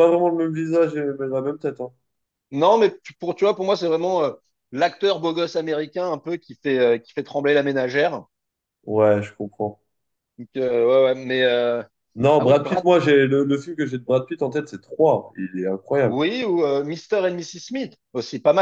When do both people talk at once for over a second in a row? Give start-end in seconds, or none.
none